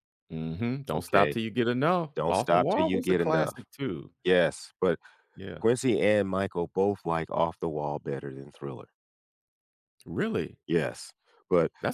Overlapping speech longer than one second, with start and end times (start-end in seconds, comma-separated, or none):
2.2-3.7